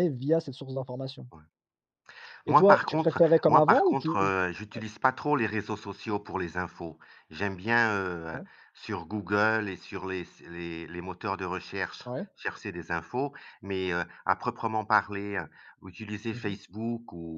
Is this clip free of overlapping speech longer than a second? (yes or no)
no